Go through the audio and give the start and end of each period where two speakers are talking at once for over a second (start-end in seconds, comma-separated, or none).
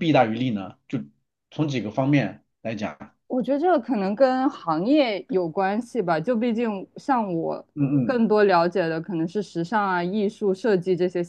none